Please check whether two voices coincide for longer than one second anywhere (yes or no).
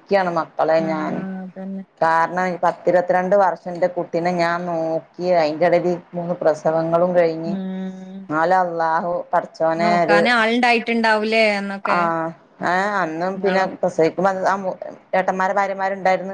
no